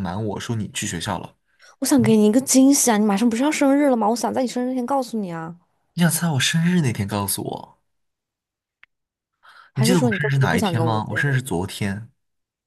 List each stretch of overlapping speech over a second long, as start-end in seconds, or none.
9.7-11.4